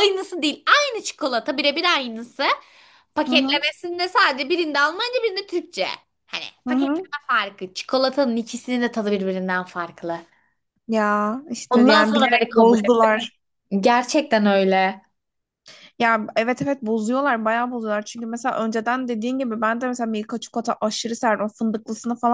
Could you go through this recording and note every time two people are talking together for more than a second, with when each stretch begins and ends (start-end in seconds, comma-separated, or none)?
11.7-13.1